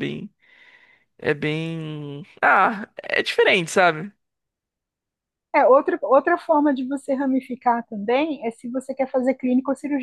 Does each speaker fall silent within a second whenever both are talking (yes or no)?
yes